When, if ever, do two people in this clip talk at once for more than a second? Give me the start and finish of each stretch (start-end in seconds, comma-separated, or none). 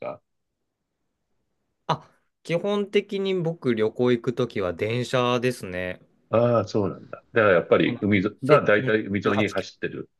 7.8-9.7